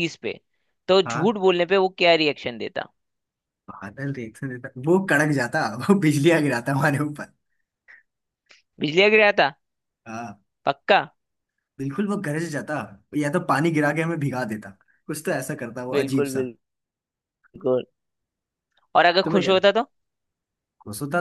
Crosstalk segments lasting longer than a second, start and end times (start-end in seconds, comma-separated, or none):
none